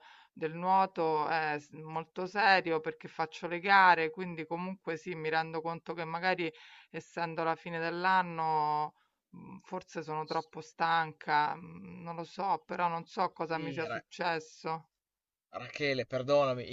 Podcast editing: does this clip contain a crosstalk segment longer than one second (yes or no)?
no